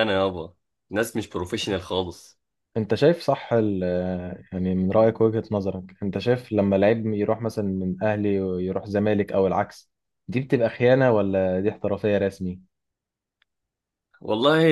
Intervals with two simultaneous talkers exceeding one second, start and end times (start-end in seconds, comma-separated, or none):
none